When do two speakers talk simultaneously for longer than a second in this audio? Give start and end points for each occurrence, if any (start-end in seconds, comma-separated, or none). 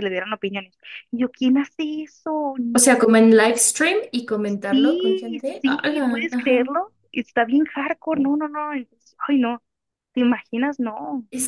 4.7-6.6